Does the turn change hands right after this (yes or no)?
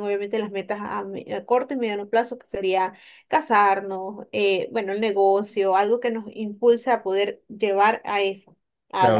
yes